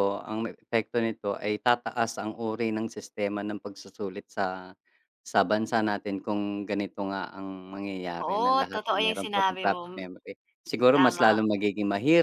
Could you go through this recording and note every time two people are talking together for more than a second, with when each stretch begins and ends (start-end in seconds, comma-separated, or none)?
8.2-10.1